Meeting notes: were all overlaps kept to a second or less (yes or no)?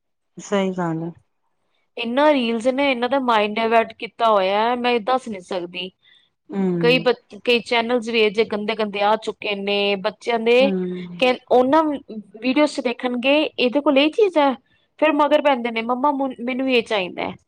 yes